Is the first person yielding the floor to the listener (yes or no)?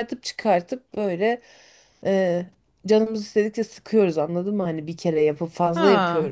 yes